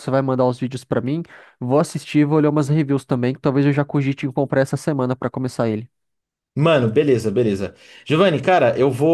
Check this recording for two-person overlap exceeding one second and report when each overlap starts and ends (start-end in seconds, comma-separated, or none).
none